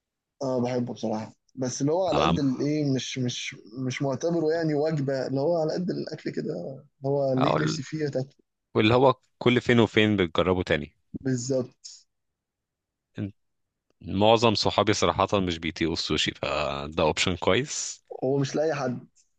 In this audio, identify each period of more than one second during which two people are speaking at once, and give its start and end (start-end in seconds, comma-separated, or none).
none